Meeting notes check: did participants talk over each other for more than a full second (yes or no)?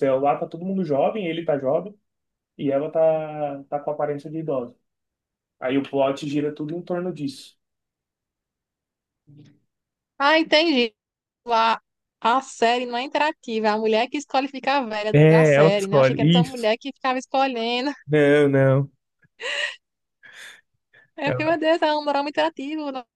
yes